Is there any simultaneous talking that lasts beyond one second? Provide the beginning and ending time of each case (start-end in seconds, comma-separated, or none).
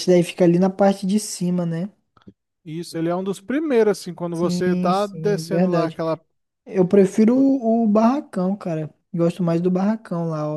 4.3-6.0